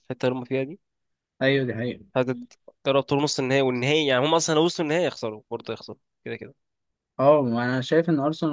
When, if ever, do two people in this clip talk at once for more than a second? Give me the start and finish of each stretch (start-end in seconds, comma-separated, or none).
none